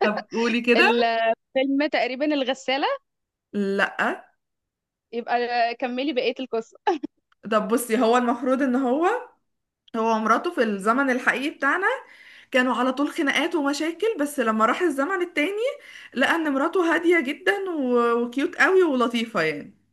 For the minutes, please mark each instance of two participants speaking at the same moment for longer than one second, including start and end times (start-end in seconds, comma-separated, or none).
none